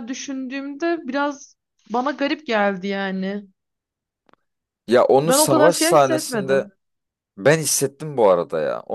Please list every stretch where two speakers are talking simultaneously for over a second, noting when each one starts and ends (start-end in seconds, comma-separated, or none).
5.2-6.7